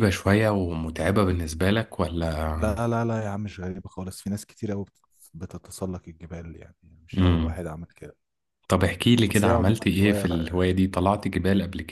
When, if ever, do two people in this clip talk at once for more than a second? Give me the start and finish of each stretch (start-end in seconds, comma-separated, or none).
9.2-10.5